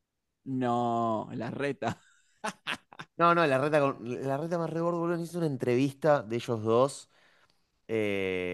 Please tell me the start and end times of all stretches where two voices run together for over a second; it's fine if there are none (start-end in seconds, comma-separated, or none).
none